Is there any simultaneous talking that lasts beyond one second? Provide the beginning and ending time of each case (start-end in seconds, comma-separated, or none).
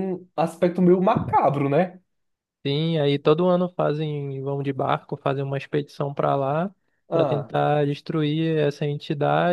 none